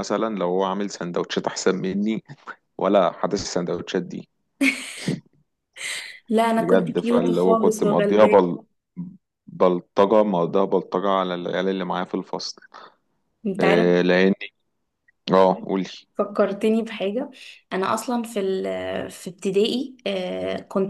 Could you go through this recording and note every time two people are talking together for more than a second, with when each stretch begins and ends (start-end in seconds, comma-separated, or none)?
6.6-8.4